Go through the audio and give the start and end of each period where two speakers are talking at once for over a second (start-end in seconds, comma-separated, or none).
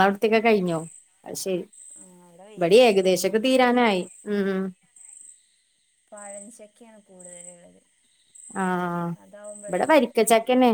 none